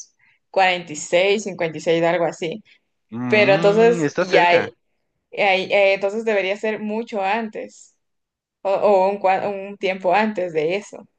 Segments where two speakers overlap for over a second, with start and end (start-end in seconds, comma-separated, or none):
3.3-4.7